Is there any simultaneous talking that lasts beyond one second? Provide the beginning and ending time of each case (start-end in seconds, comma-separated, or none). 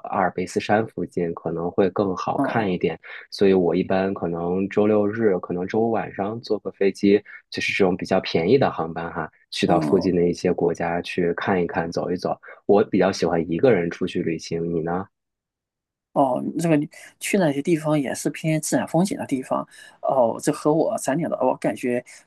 none